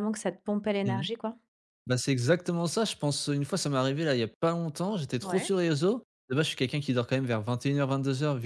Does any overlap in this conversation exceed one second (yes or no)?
no